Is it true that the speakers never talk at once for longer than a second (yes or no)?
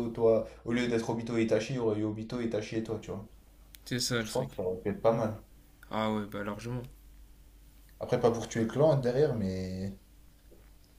yes